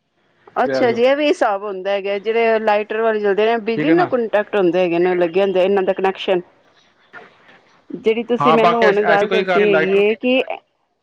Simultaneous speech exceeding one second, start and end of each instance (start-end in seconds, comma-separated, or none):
8.4-10.0